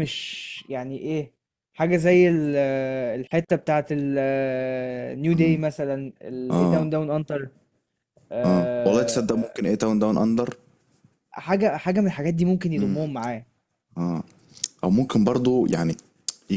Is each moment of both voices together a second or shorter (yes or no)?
yes